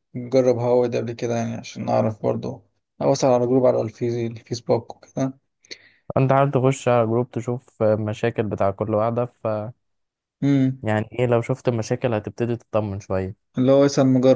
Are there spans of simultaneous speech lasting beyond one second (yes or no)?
no